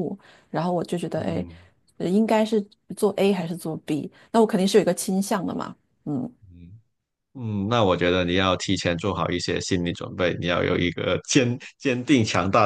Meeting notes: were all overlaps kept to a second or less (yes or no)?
yes